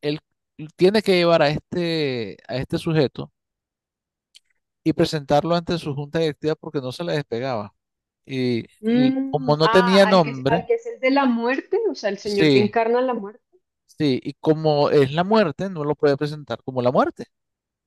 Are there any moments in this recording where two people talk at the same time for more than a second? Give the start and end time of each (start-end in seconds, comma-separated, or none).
8.8-10.7